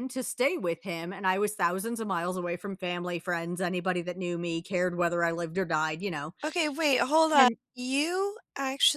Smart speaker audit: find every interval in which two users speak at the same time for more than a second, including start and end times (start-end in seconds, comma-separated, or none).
none